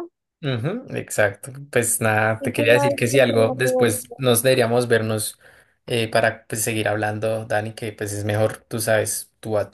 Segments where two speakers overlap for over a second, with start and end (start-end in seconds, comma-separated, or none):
2.4-3.9